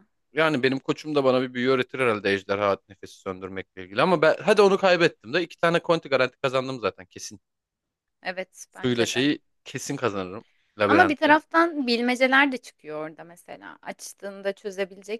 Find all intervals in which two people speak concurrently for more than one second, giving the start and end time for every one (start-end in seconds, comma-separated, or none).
none